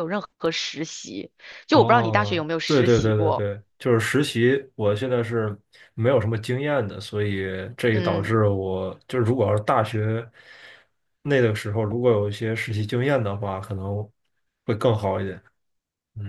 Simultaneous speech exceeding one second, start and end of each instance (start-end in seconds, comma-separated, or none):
1.7-3.5